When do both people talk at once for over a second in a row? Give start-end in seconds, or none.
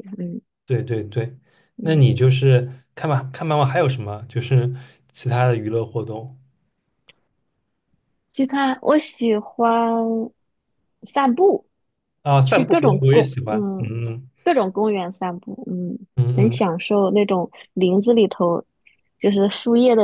12.4-14.0